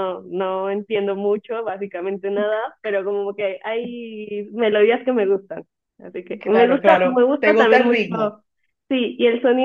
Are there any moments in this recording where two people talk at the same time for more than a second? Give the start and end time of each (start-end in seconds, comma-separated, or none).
6.4-8.1